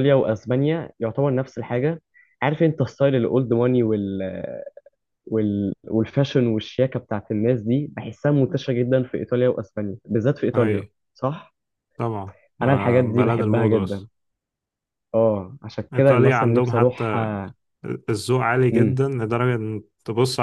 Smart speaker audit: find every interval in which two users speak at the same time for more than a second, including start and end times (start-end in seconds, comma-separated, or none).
12.6-14.1, 15.9-17.3